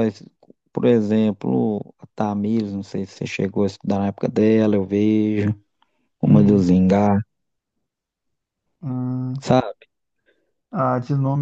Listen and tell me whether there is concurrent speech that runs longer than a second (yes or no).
no